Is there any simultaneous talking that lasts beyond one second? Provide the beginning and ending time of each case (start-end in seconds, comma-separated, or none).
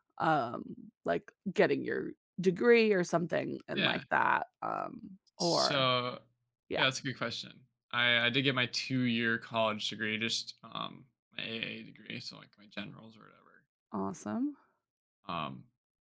none